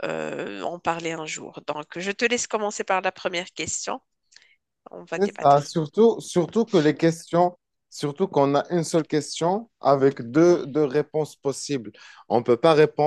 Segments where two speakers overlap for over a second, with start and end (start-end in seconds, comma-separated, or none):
none